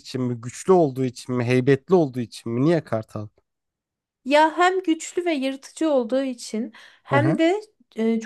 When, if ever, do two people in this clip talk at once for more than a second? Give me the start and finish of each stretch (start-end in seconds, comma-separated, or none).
none